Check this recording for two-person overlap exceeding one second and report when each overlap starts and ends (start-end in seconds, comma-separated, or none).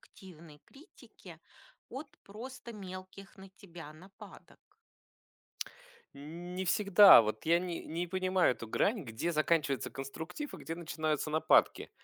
none